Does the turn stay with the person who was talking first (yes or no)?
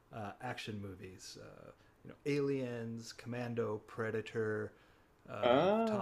yes